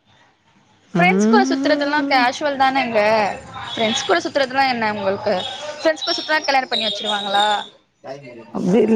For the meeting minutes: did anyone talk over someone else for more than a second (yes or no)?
yes